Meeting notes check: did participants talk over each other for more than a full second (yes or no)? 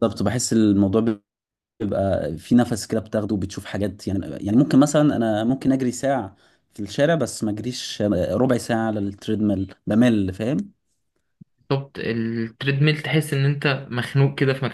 no